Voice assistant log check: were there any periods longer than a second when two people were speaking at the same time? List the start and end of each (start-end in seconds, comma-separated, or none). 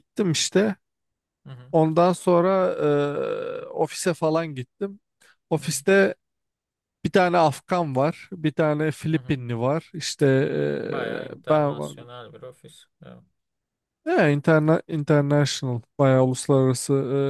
10.4-11.9